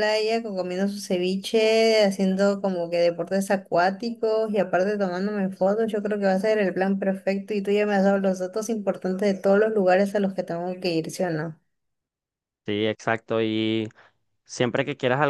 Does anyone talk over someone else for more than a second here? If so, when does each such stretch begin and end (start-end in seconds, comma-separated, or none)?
none